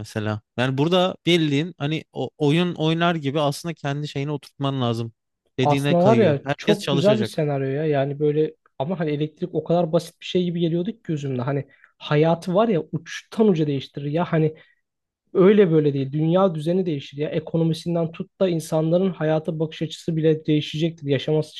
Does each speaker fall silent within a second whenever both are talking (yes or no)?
no